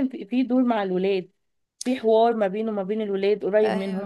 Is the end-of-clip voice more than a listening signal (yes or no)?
yes